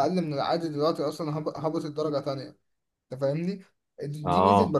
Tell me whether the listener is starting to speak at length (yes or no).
no